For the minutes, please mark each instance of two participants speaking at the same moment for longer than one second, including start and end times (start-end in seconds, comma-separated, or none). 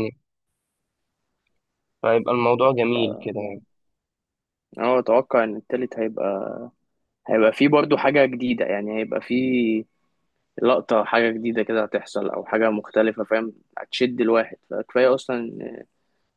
none